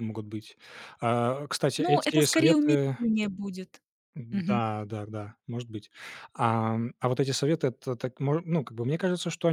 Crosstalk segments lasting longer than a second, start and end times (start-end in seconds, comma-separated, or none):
1.8-3.0